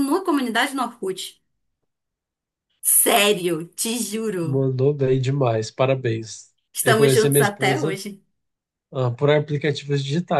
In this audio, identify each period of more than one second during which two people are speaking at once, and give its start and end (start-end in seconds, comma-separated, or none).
6.7-8.0